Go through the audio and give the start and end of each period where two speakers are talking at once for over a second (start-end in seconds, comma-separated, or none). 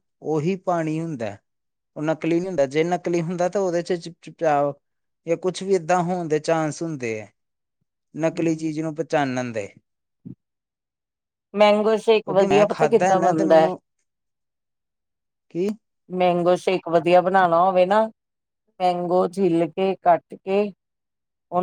12.2-13.7